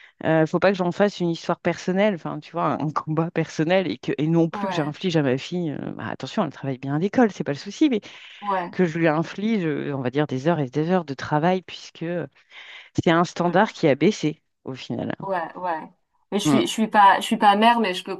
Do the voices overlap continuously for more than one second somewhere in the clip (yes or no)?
no